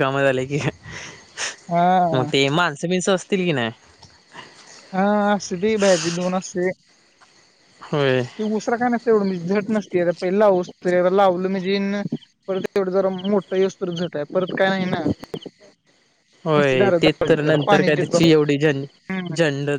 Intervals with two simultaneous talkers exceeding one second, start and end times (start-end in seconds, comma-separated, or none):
16.9-18.8